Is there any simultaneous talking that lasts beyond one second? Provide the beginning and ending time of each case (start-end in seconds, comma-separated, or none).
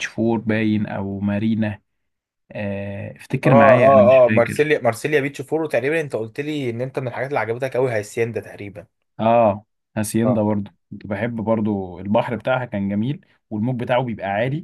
3.4-4.8